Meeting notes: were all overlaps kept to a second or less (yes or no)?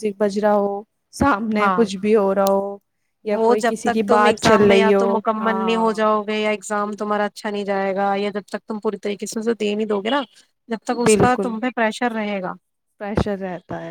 no